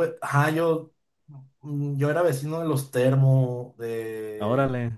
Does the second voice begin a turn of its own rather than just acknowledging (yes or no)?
no